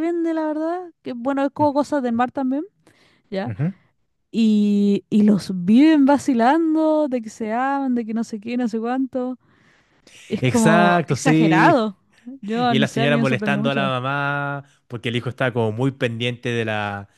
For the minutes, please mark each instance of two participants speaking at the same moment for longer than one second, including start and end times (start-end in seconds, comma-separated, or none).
10.4-11.8, 12.6-13.9